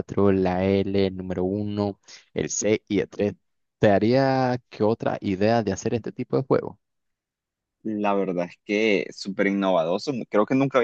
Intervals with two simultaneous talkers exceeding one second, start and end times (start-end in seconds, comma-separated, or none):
none